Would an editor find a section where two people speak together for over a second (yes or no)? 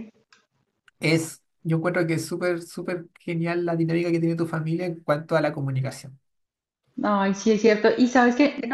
no